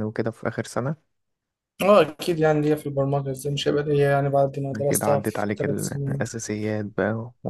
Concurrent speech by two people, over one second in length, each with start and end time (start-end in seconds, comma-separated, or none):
4.9-6.2